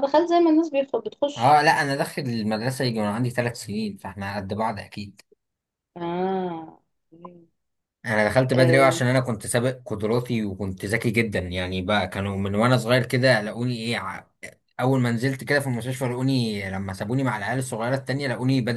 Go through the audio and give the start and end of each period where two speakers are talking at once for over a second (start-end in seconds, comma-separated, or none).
none